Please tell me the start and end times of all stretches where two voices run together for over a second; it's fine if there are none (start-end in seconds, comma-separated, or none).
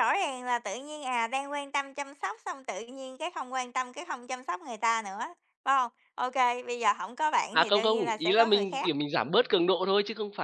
7.5-8.9